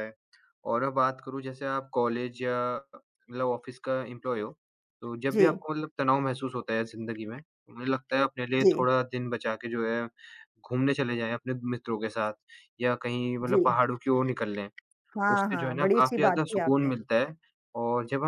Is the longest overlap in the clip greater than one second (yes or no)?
yes